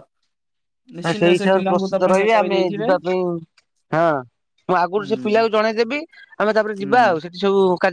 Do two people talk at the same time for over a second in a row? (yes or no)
yes